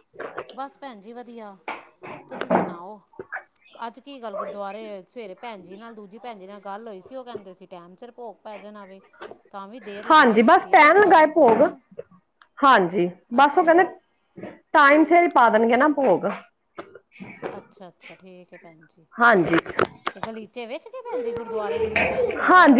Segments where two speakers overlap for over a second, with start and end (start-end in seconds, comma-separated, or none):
10.1-11.6